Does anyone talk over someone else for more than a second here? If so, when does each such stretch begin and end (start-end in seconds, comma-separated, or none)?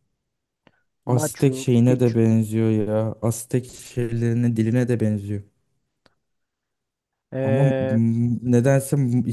1.1-2.3